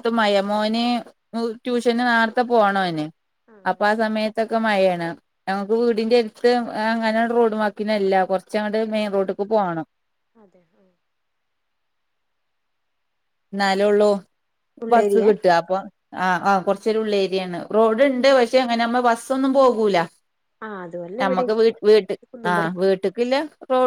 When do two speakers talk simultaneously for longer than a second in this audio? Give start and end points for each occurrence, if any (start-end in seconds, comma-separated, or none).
none